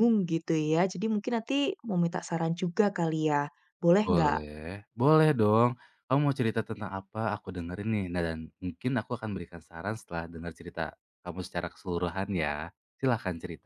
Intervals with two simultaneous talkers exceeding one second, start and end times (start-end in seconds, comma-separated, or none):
none